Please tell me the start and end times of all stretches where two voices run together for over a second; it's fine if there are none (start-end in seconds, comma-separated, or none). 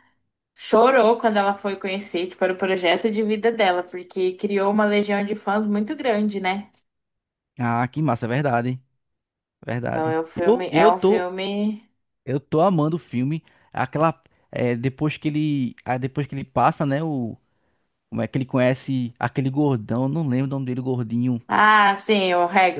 9.9-11.3